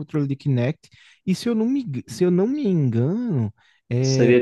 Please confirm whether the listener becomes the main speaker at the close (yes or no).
yes